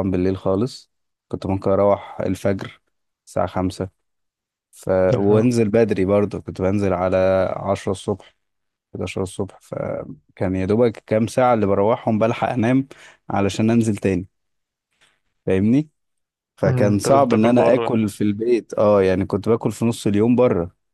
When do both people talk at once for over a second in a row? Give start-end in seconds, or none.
16.6-17.9